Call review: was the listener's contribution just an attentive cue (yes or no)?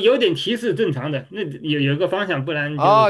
no